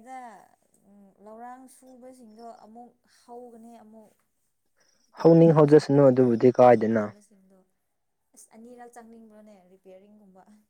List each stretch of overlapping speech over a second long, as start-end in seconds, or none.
5.2-7.0